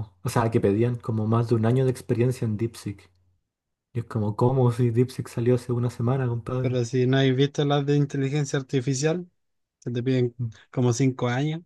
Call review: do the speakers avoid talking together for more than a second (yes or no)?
yes